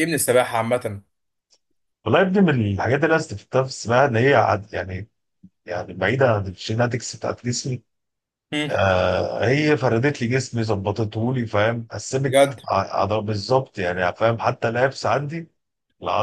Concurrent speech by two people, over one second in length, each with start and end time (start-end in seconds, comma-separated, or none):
none